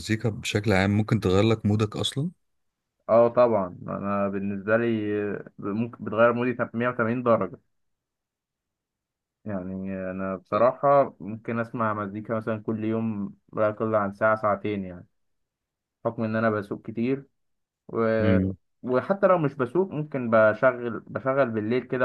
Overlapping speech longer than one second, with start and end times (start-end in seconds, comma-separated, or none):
none